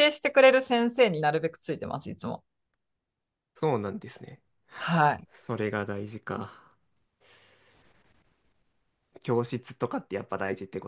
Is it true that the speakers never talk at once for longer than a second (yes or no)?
yes